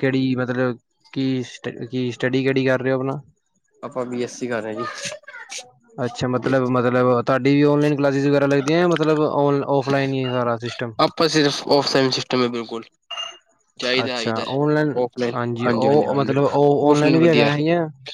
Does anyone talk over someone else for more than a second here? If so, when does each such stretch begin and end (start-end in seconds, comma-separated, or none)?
15.7-17.5